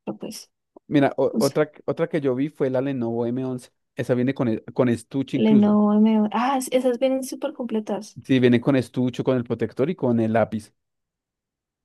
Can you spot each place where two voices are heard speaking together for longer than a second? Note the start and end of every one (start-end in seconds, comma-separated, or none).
none